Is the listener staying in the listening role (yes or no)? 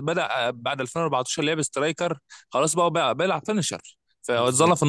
yes